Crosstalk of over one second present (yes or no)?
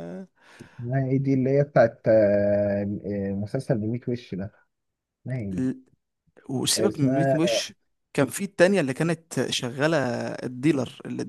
no